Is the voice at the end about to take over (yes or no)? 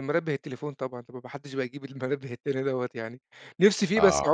no